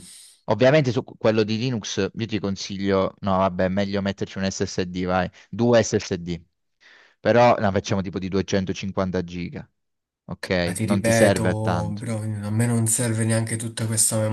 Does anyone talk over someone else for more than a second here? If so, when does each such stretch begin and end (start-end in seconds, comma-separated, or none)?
10.6-12.0